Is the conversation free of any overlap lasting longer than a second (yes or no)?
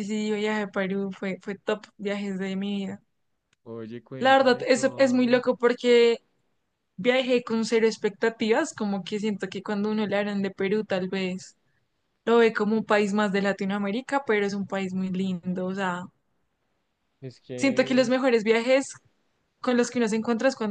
no